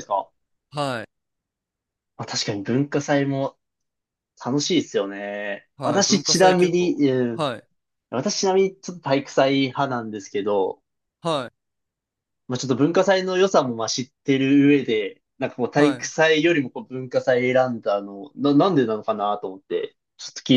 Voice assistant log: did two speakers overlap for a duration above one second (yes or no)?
yes